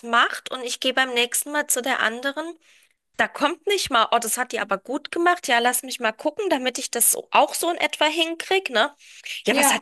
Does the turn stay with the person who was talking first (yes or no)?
yes